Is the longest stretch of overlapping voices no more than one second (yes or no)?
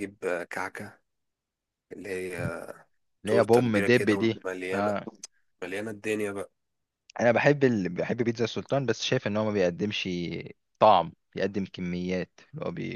no